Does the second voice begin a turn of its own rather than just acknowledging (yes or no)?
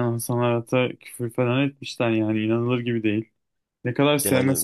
no